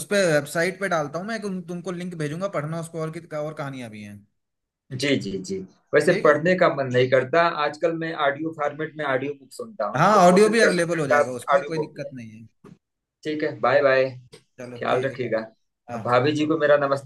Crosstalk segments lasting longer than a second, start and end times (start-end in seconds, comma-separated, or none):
10.0-12.1